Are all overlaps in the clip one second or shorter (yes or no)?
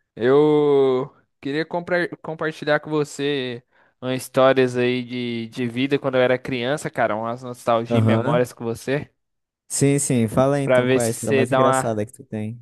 no